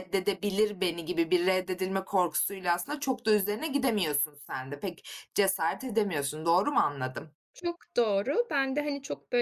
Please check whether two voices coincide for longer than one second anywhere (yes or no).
no